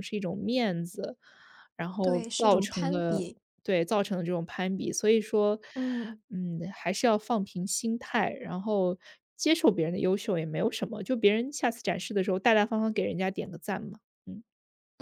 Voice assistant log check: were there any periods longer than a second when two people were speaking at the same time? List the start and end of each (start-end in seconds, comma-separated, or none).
2.0-3.2